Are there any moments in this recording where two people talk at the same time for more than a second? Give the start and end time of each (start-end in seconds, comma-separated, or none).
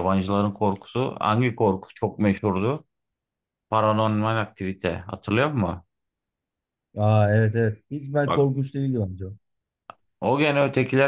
none